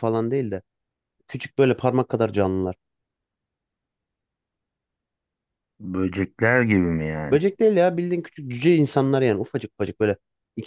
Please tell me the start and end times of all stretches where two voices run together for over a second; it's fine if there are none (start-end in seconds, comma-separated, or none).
none